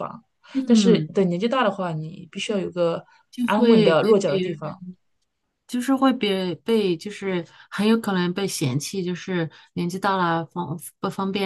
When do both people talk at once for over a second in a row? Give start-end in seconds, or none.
3.5-4.8